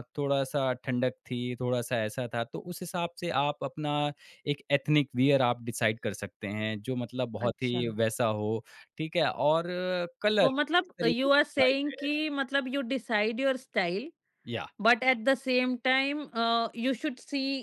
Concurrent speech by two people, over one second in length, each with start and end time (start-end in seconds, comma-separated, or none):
10.4-12.1